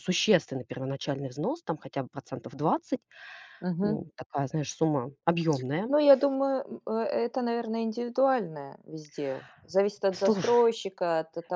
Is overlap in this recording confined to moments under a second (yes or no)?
yes